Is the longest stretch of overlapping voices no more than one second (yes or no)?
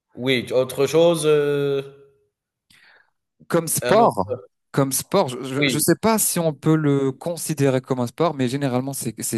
yes